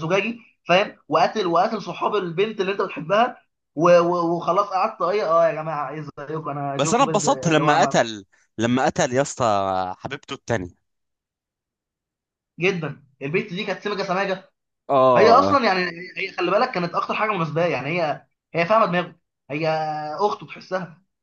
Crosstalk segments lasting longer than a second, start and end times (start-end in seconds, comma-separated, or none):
6.8-8.0